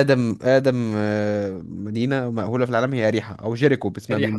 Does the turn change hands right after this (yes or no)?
yes